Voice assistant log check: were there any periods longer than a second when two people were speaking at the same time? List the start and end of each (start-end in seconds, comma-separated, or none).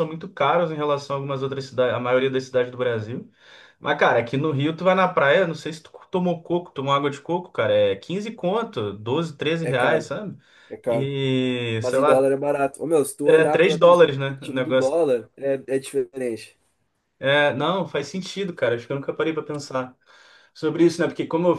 13.2-15.0